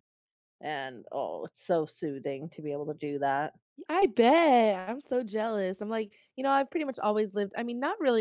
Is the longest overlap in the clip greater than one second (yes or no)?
no